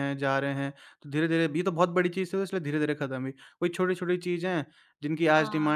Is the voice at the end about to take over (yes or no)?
no